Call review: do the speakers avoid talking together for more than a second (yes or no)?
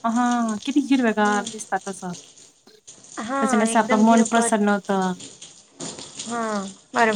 no